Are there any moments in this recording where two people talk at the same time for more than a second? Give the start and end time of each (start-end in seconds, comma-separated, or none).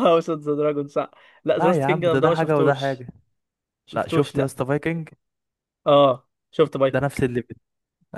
1.6-3.0